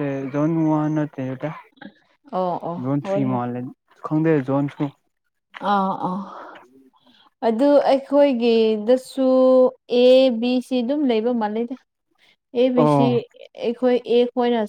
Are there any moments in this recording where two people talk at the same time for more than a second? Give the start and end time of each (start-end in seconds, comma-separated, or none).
none